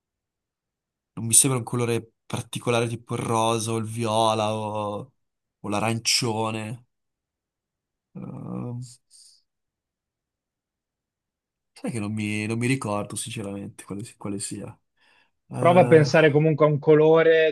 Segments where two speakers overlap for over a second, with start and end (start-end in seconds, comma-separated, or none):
none